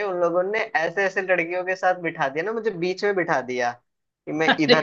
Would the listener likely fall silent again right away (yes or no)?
yes